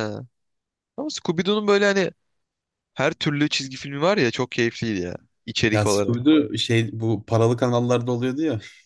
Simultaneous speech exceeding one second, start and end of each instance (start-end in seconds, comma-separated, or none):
none